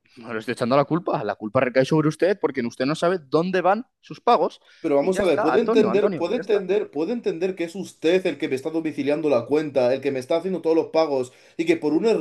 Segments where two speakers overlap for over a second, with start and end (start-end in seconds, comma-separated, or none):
5.0-6.6